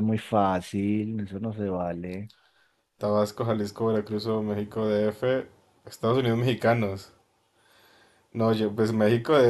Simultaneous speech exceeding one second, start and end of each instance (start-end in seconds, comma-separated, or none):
none